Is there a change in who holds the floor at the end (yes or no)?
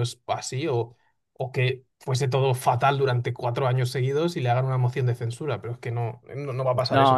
yes